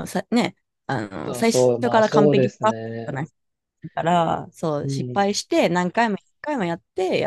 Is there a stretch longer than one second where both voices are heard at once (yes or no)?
yes